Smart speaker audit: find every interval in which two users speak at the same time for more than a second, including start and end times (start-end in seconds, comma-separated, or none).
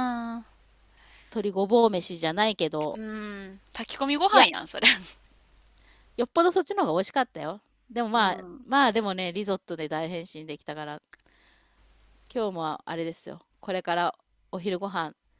none